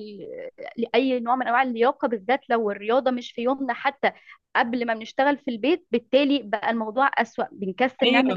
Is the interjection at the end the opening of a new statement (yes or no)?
no